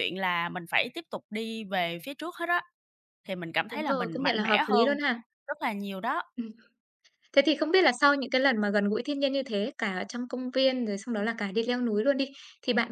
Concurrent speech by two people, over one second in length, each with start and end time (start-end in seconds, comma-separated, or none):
3.7-4.9